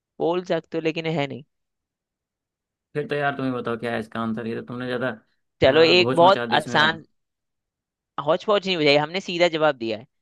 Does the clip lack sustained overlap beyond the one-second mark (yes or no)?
no